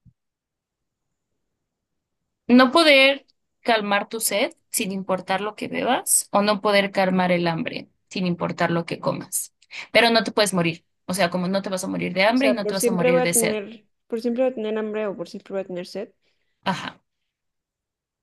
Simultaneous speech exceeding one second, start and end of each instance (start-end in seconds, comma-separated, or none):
12.3-13.6